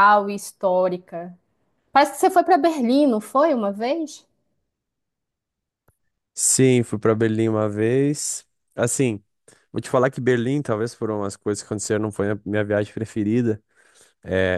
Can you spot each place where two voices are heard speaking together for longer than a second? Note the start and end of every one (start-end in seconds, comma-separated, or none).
none